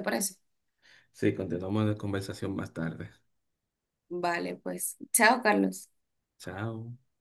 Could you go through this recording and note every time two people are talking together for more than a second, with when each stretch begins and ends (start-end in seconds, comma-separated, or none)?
none